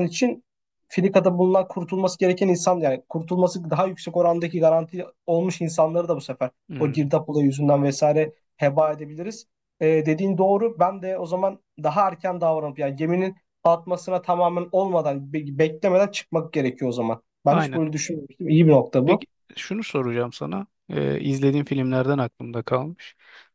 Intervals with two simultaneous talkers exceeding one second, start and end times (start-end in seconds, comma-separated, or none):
none